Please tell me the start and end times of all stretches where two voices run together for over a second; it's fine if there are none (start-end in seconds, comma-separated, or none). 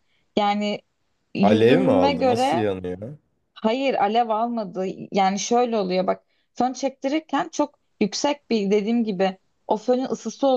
1.4-2.7